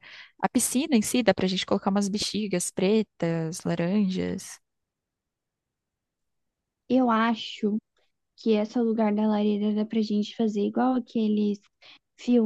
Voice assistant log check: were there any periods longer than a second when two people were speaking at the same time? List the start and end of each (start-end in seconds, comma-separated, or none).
none